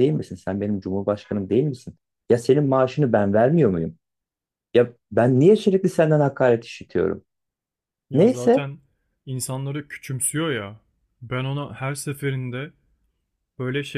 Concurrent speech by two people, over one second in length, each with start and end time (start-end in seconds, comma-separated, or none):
none